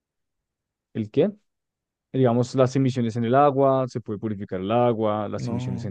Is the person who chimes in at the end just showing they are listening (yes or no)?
yes